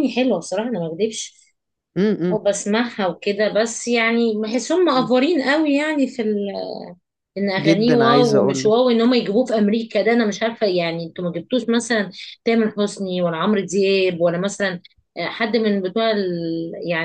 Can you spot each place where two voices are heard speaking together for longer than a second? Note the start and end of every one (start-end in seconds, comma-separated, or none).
7.6-8.8